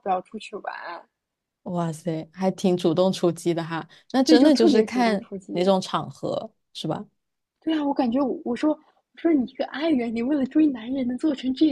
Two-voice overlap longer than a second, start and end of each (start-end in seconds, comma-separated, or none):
4.2-5.6